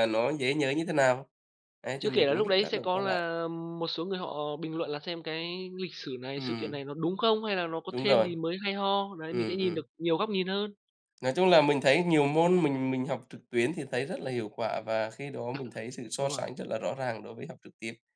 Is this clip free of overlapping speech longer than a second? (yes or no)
no